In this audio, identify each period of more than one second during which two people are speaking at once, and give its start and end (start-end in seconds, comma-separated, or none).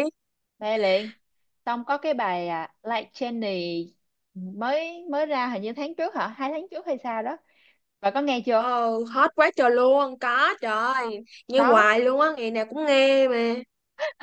none